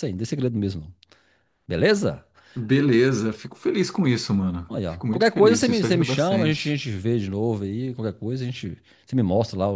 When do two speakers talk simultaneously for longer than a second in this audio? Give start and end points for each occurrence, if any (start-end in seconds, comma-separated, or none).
4.7-6.8